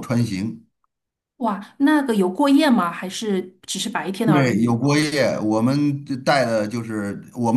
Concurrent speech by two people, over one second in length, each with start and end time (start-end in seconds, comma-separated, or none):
none